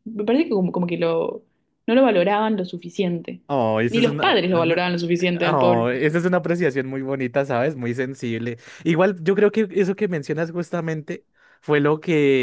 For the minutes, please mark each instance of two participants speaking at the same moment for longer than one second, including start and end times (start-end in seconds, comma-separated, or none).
3.9-5.8